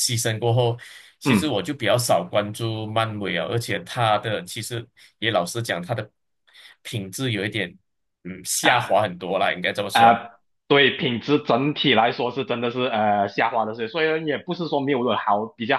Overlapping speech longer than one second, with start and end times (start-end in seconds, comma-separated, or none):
none